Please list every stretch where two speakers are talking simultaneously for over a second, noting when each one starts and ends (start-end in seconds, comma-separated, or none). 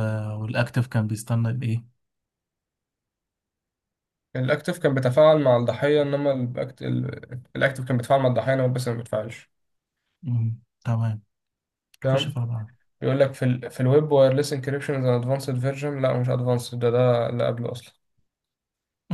none